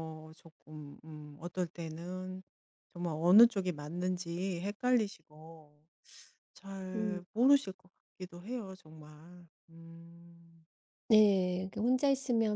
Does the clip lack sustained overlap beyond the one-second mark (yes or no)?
yes